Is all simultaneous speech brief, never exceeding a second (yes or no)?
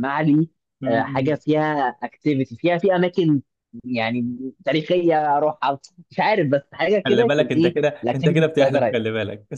no